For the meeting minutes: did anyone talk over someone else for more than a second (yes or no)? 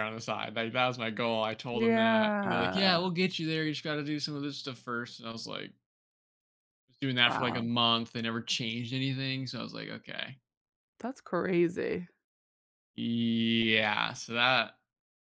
yes